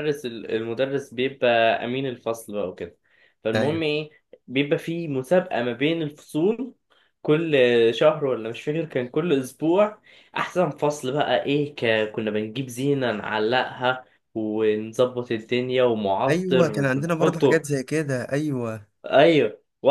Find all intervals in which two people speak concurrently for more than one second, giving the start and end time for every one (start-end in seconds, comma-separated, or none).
16.3-17.7